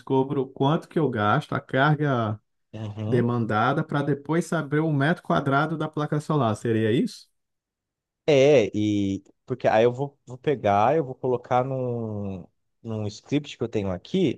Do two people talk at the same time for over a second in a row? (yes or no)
no